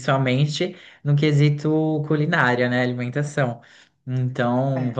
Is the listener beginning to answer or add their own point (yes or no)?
no